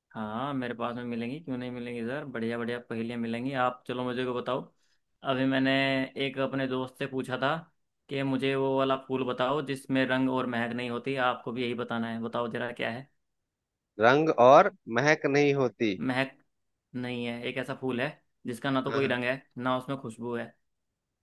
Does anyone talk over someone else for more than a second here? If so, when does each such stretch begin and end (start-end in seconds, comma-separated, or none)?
none